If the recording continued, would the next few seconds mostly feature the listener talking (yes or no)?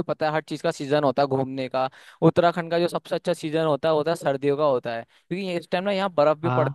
no